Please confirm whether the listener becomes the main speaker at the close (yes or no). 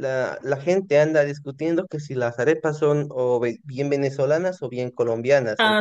no